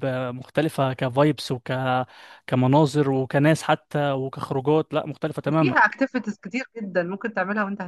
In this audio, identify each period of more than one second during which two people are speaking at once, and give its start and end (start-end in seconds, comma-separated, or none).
none